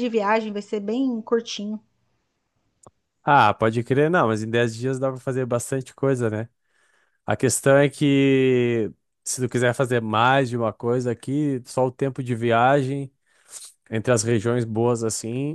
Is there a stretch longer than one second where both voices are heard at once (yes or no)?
no